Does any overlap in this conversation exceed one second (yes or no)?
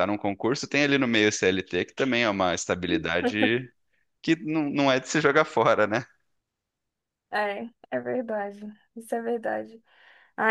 no